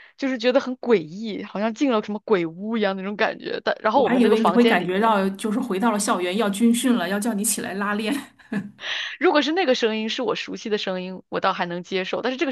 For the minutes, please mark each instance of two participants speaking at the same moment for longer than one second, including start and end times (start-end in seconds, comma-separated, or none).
3.9-5.1